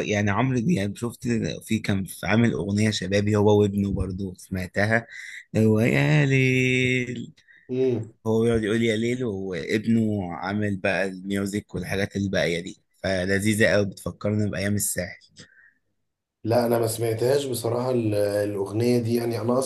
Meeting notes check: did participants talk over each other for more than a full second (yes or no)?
no